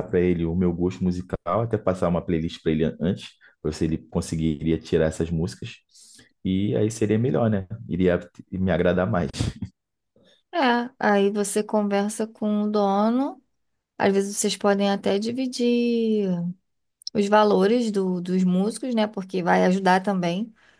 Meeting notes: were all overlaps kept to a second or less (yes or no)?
yes